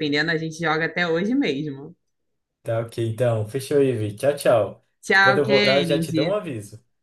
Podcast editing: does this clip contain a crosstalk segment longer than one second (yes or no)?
yes